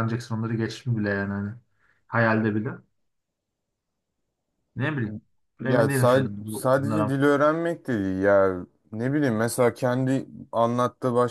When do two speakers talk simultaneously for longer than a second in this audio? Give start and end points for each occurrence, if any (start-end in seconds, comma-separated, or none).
5.7-7.2